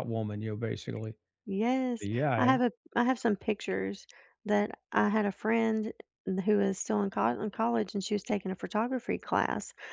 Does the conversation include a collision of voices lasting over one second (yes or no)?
no